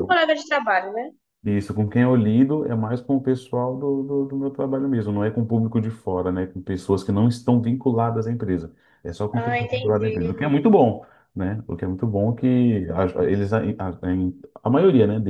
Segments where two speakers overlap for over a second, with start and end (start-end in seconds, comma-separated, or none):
9.3-10.6